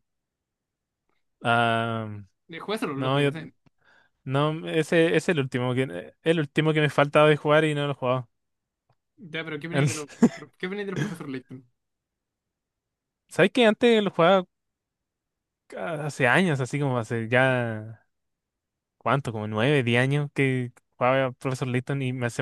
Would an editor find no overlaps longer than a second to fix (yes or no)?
yes